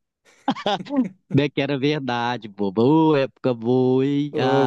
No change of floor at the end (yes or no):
no